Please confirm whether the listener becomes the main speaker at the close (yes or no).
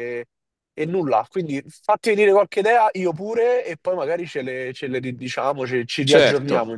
yes